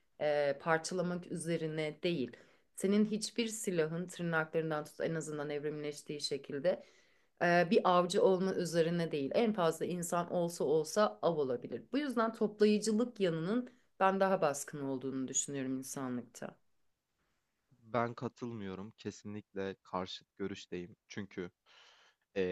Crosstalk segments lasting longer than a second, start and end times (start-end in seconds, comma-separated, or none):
none